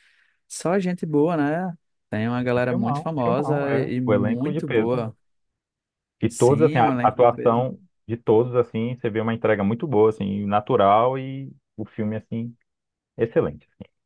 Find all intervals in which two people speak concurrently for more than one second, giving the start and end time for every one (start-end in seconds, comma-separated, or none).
2.6-5.0, 6.3-7.6